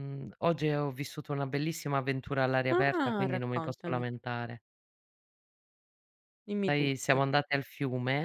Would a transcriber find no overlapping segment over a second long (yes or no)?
no